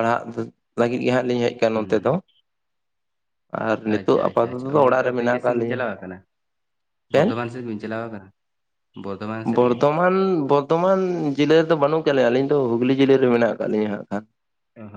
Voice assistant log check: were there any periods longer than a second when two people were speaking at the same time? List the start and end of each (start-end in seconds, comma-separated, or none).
4.0-5.8